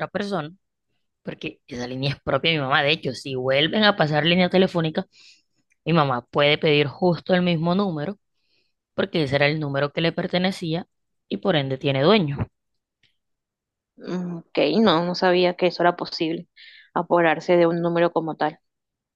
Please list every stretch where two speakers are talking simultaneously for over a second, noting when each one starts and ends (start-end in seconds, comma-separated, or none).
none